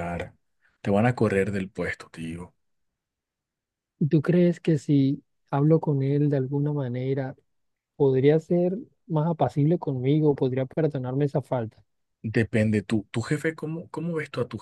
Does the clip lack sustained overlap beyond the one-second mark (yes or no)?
yes